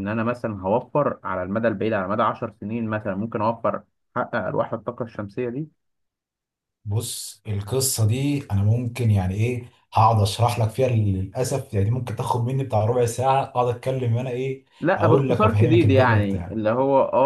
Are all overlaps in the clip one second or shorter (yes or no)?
no